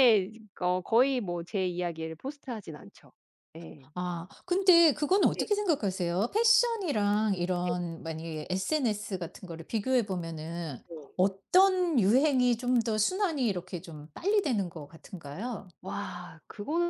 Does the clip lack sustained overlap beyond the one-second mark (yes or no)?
yes